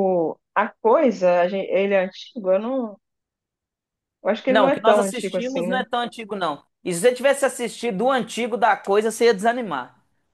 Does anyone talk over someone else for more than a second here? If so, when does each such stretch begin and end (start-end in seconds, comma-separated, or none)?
4.5-5.8